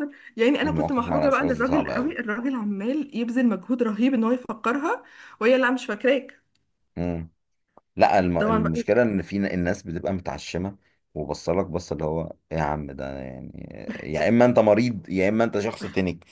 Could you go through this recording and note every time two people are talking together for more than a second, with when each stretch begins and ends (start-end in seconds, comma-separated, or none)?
0.6-2.1